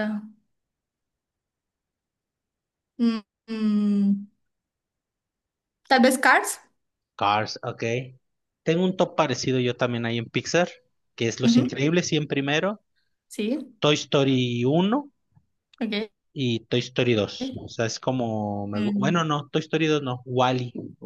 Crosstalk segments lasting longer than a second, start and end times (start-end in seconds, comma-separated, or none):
none